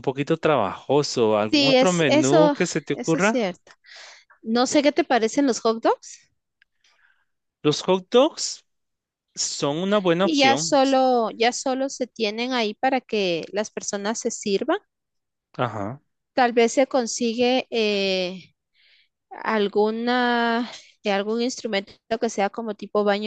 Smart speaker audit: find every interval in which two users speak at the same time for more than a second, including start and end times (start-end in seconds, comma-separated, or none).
1.5-3.4